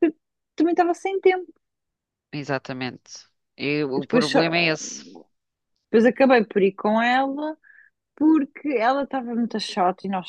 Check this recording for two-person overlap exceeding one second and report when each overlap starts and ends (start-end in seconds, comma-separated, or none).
none